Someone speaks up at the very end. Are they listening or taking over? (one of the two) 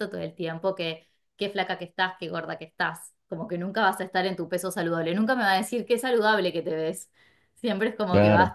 listening